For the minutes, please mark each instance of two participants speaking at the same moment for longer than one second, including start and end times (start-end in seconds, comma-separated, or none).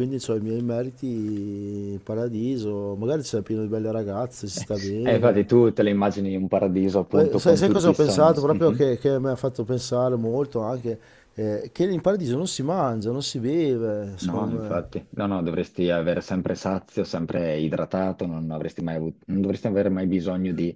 7.1-8.9